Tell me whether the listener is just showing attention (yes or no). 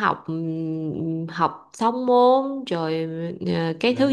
yes